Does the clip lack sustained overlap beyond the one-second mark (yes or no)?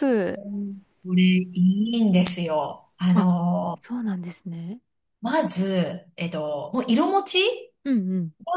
yes